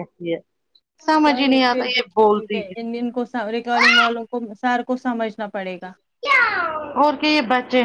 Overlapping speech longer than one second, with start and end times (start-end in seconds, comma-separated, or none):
1.2-2.6